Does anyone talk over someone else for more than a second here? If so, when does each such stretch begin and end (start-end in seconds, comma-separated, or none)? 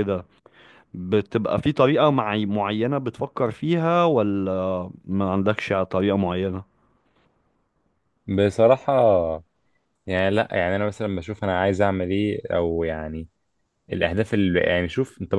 none